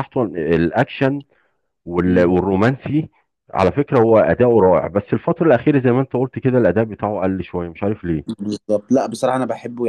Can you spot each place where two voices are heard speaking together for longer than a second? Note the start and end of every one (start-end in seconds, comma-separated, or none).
none